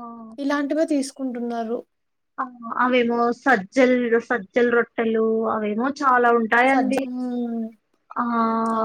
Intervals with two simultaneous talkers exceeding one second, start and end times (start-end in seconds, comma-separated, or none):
none